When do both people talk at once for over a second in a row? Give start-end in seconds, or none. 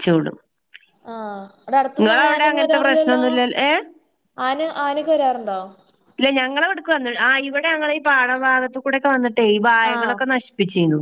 2.0-3.2